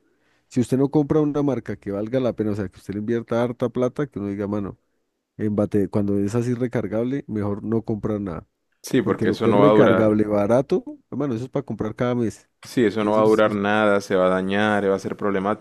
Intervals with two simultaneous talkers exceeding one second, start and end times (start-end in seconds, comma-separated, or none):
9.0-10.2